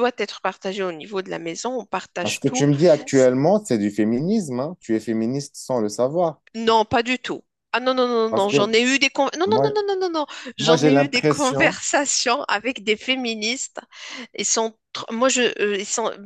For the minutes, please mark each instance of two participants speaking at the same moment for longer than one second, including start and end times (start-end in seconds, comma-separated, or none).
10.6-11.8